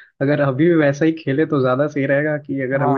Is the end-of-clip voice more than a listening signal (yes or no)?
yes